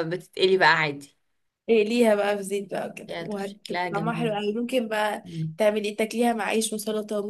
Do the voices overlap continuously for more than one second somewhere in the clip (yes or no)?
yes